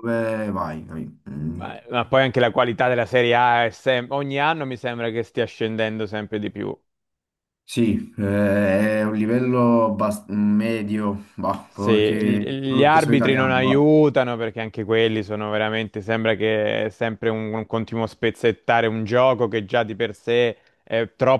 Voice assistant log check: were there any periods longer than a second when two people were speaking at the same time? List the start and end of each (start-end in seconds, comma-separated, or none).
11.7-13.9